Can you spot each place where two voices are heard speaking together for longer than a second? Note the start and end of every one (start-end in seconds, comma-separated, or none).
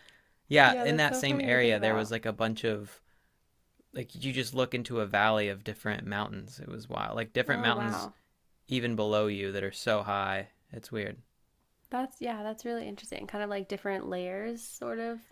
0.7-2.1